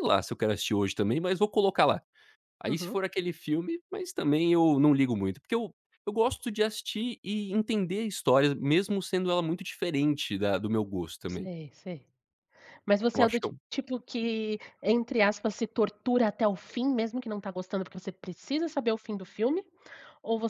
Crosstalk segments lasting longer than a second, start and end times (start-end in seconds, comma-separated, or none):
none